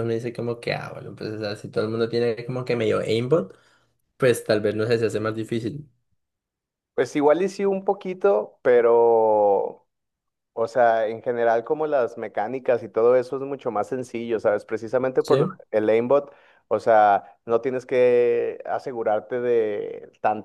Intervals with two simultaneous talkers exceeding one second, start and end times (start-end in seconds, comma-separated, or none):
none